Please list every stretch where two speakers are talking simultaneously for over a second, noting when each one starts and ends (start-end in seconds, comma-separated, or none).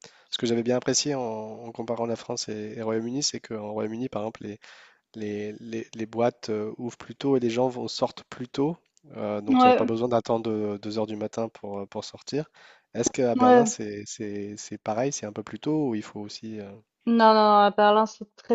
none